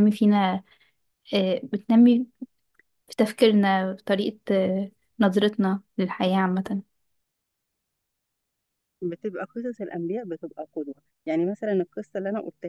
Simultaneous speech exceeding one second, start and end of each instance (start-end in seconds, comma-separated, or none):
none